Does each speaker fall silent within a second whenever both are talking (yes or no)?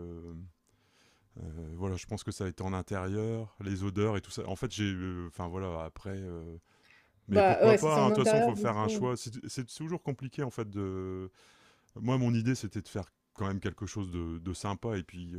no